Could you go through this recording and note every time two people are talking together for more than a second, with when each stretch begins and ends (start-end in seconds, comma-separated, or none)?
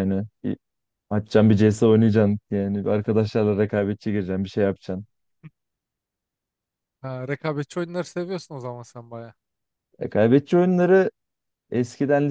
none